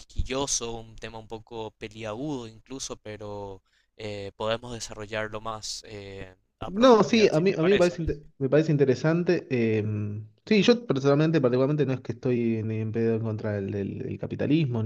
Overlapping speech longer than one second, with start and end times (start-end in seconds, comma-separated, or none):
6.7-8.0